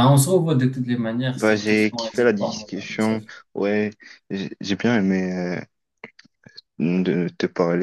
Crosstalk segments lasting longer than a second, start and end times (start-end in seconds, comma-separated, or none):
1.3-3.4